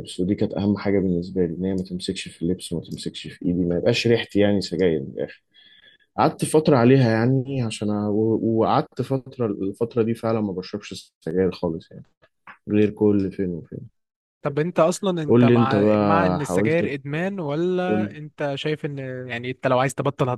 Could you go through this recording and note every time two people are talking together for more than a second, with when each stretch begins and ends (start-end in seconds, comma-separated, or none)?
15.3-16.8